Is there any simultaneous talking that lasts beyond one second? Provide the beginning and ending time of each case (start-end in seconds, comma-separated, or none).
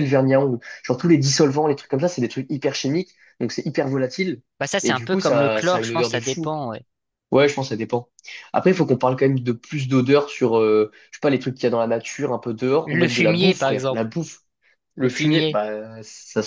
4.8-6.5, 12.9-14.1